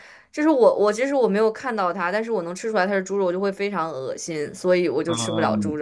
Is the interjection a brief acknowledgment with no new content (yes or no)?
no